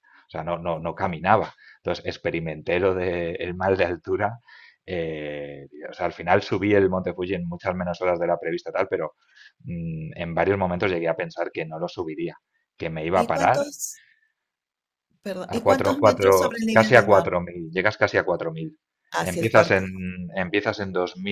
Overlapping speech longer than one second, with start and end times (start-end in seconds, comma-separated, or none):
15.5-17.3